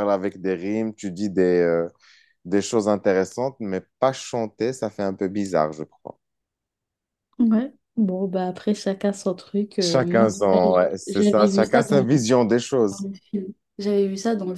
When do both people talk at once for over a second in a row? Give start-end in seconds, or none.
9.8-12.1